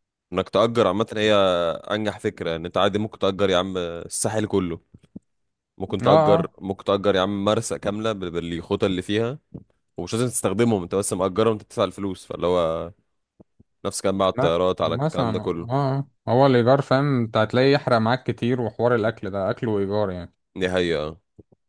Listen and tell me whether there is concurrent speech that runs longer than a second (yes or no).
yes